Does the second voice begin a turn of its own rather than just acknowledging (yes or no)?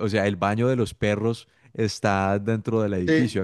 no